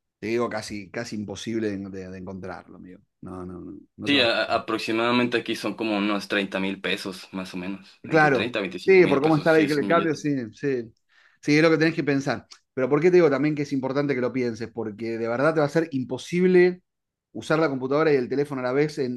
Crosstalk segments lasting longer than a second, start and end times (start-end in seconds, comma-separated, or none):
8.0-10.2